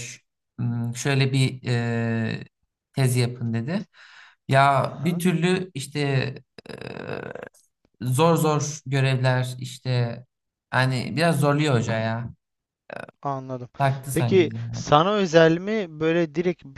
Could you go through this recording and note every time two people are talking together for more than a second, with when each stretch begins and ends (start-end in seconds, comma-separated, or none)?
none